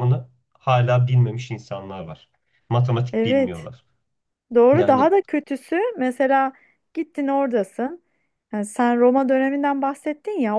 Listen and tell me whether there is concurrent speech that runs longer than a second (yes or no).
no